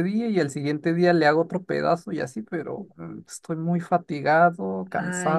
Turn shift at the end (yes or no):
yes